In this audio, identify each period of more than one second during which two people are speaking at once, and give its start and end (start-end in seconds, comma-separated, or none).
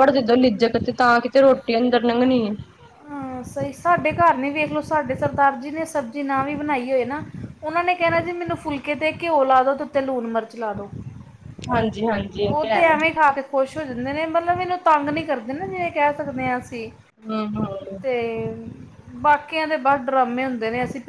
none